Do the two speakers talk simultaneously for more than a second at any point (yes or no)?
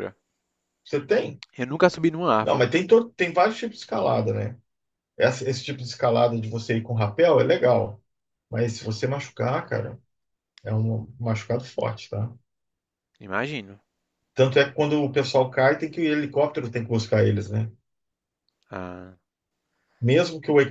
no